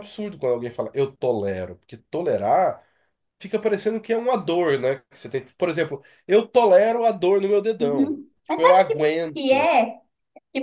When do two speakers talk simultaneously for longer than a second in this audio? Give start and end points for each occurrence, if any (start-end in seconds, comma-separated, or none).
7.8-9.7